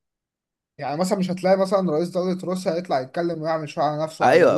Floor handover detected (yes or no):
yes